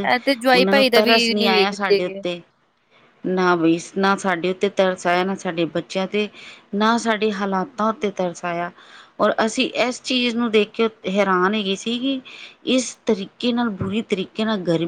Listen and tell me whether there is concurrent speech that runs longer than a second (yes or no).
yes